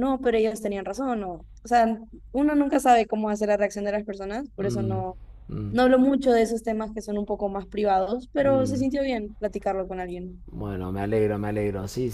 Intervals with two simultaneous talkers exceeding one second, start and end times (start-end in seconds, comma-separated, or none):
none